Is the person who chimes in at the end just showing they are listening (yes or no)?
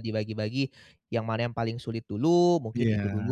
yes